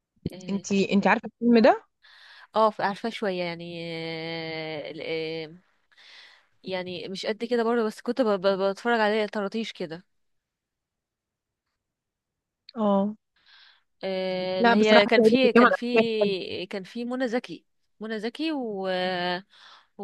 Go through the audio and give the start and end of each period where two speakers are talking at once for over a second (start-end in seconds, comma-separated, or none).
14.6-16.3